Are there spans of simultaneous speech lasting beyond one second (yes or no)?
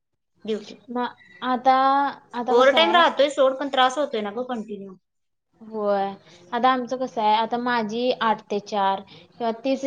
no